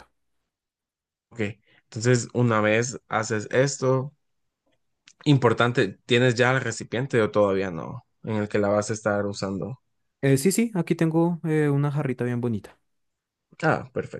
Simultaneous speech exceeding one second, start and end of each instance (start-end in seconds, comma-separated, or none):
none